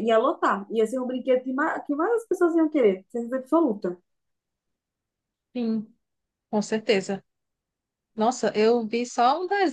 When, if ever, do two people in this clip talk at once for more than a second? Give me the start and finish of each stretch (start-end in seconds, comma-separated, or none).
none